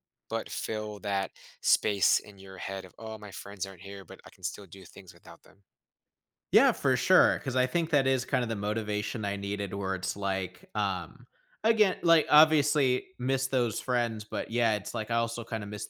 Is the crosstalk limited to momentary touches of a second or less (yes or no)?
yes